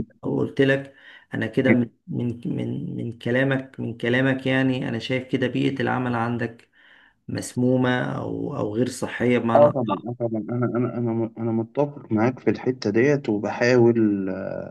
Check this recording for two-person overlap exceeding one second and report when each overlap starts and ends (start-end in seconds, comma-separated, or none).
none